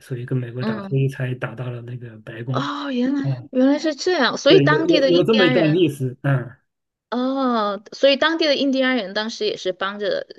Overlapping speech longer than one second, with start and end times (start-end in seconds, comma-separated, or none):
4.5-5.8